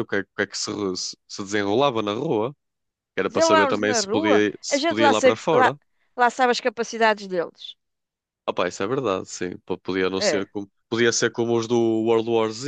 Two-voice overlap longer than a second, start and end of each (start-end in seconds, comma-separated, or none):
3.3-5.7